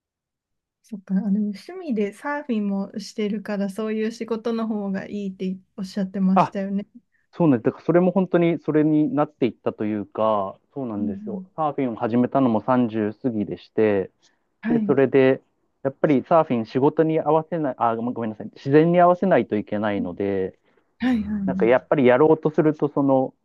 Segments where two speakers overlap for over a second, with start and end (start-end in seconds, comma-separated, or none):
none